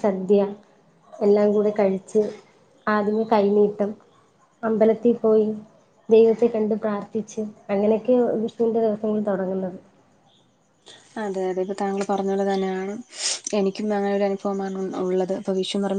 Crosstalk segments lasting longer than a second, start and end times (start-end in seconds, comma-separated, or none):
none